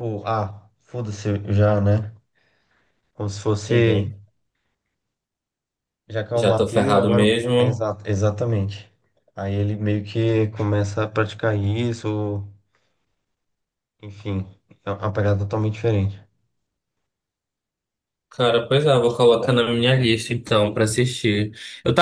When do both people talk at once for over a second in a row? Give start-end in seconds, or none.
6.3-7.9